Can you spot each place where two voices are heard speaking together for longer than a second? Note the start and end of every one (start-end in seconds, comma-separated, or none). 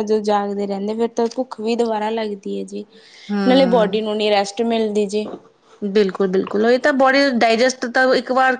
none